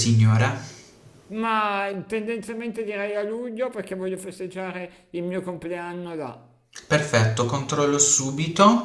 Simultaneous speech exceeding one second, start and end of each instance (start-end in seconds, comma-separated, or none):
none